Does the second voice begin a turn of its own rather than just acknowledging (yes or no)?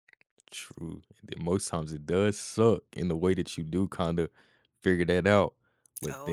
no